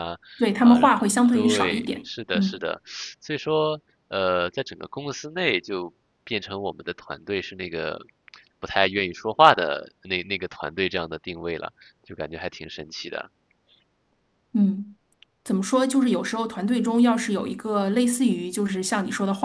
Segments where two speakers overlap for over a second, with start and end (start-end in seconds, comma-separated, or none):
0.6-2.6